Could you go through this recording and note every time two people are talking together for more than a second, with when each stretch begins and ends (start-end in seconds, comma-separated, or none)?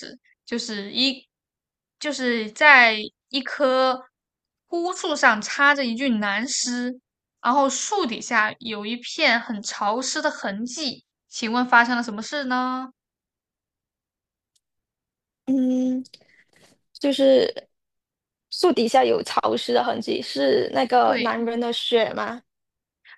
none